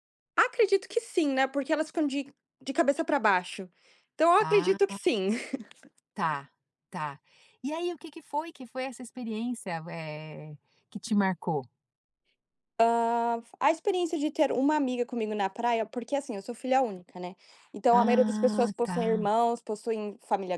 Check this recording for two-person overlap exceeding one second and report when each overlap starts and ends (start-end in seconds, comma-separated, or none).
17.9-19.3